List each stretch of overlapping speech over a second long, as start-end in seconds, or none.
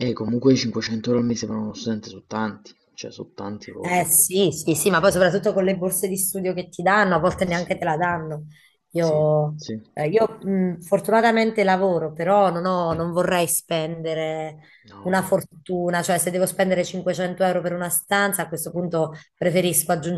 none